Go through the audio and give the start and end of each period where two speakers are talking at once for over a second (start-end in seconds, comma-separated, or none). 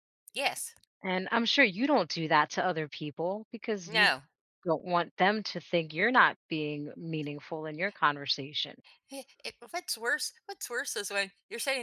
none